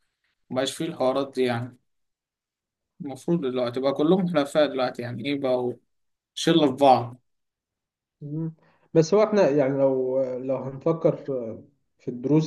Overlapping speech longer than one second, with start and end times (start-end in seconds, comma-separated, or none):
none